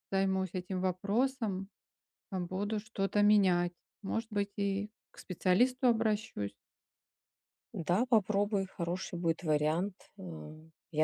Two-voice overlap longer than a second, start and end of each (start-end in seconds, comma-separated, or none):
none